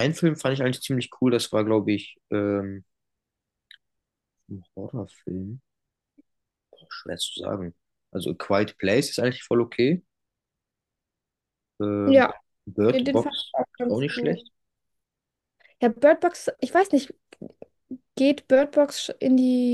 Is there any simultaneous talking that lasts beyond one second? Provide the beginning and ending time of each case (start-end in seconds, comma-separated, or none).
12.9-14.4